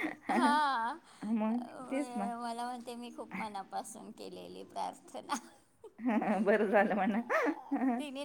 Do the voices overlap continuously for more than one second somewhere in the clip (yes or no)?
no